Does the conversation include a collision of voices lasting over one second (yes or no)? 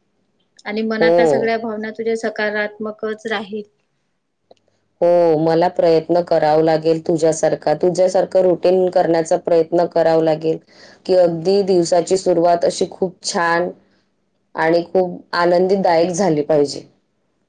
no